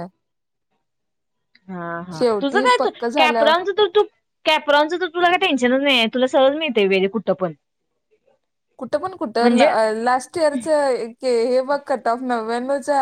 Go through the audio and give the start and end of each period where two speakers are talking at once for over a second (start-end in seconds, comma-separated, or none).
none